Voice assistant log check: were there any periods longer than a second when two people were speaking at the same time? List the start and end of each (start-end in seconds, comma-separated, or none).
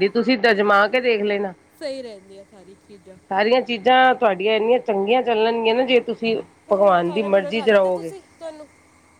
6.7-8.1